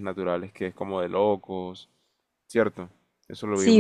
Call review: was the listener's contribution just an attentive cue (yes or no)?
no